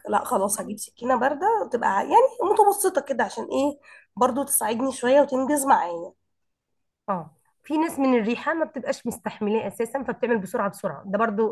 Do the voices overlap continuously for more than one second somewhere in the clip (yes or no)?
no